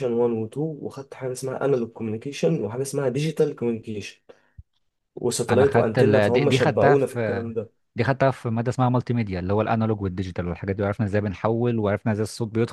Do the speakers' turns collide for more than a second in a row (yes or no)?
yes